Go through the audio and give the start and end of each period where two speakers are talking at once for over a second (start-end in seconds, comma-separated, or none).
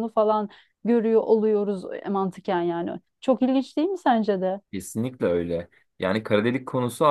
none